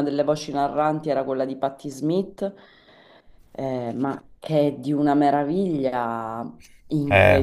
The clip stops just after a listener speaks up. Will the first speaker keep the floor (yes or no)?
yes